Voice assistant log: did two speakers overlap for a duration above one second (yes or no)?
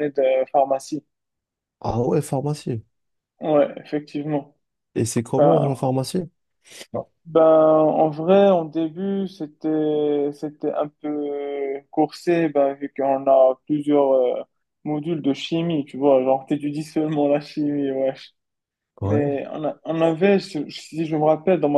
no